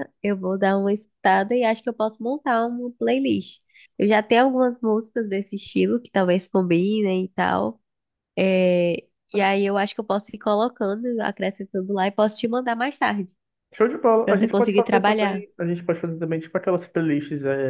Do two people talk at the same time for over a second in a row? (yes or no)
yes